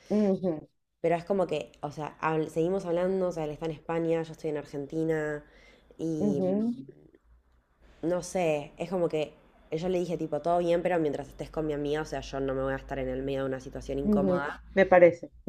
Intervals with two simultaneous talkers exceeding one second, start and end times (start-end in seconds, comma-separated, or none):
none